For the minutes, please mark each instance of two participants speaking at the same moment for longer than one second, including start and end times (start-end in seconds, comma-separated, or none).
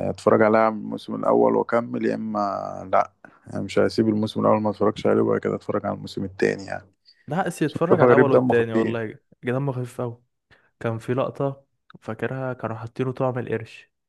7.7-9.0